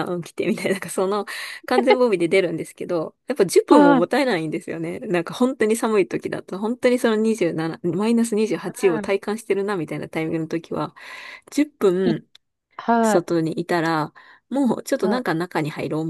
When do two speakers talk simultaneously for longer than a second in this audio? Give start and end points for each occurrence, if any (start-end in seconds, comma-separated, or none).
none